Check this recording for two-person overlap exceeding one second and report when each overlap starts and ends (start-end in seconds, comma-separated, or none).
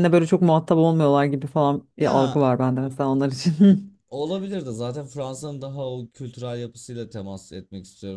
none